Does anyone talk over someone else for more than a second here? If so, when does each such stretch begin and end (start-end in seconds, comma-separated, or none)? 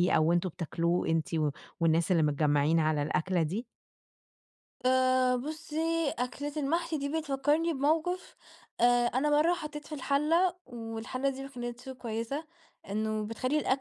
none